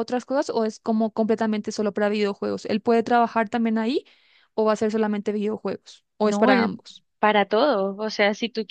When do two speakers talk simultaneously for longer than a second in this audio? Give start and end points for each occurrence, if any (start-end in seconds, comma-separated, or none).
none